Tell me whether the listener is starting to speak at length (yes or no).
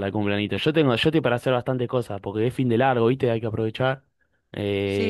yes